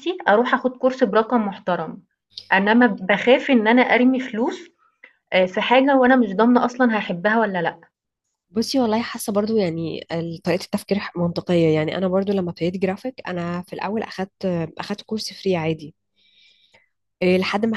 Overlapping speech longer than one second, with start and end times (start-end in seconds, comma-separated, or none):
none